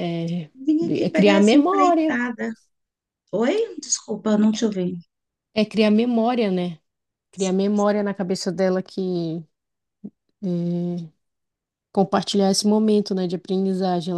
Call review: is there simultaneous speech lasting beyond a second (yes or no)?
yes